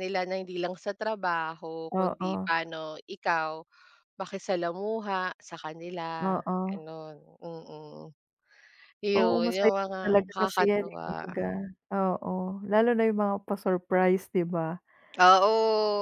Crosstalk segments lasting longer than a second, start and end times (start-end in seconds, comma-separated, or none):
9.2-11.3